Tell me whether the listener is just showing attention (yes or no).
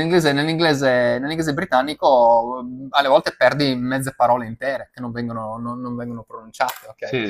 no